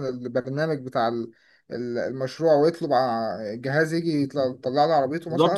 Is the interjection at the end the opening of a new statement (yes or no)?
yes